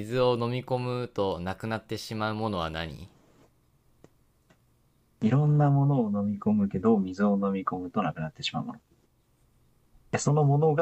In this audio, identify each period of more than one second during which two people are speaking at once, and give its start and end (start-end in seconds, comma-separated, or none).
none